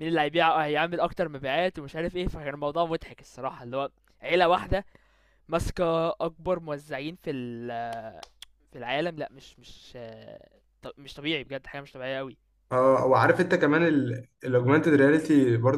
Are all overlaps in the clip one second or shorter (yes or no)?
yes